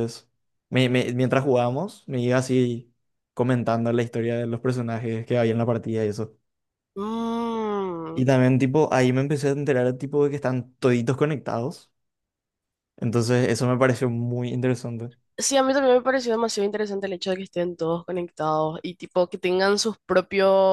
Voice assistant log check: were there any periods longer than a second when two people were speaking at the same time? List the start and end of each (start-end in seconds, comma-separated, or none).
none